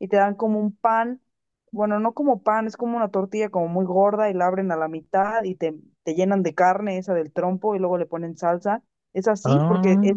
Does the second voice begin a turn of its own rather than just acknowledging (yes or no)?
no